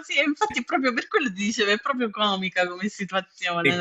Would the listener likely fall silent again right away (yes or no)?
no